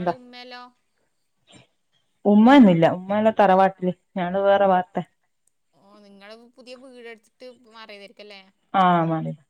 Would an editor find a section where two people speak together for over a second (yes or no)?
no